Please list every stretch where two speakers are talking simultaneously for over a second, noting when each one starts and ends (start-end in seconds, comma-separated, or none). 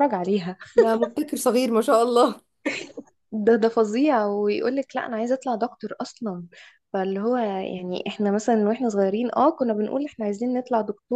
none